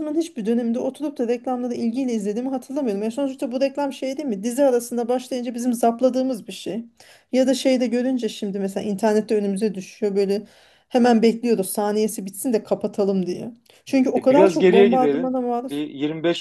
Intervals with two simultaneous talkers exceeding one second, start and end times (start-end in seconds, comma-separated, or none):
14.2-15.8